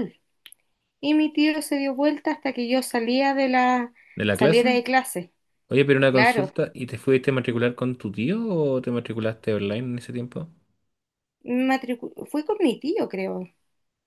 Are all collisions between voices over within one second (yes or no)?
yes